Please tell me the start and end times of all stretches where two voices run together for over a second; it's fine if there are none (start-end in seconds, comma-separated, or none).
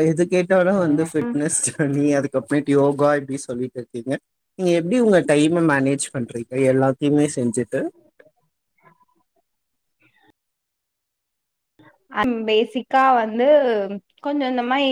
none